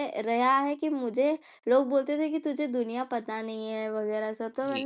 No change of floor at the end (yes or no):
no